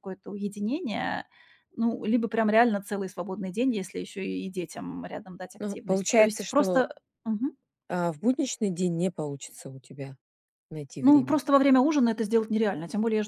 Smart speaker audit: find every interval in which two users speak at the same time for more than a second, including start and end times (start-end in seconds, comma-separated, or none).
5.6-6.9